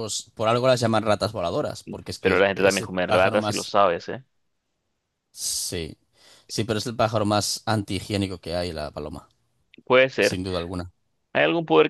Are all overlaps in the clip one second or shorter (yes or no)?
no